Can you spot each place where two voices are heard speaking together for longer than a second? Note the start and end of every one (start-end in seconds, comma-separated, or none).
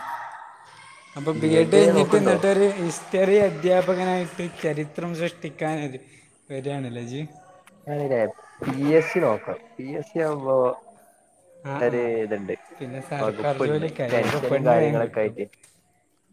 13.2-15.3